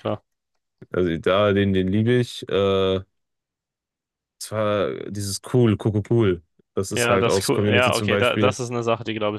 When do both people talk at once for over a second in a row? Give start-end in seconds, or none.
7.0-8.6